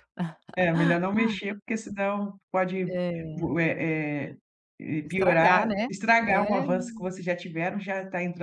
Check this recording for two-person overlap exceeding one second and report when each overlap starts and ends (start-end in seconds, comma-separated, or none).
5.0-6.6